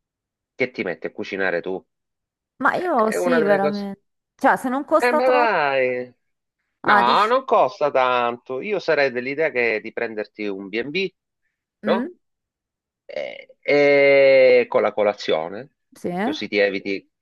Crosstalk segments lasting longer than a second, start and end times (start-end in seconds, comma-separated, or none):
2.7-3.9